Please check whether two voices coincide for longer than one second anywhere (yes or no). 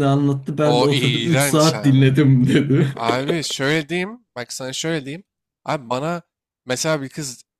yes